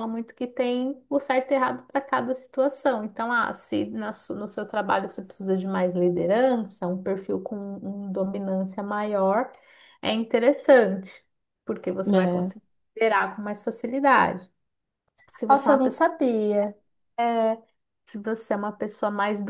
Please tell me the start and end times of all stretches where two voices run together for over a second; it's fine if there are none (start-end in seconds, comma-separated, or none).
none